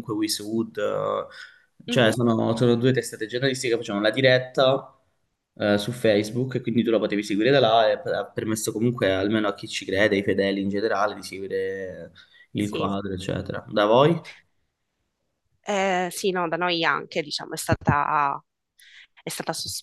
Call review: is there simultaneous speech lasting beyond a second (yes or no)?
no